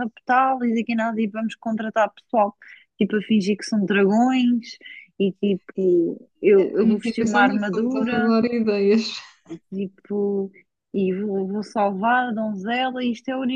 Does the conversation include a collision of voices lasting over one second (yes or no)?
yes